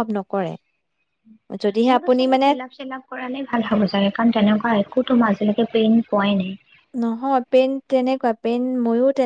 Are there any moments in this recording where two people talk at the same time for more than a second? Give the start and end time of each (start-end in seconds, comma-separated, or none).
none